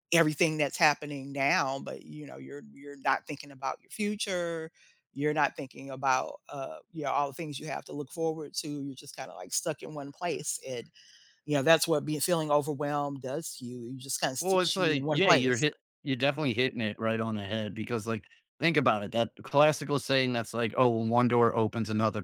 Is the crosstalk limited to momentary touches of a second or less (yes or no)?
no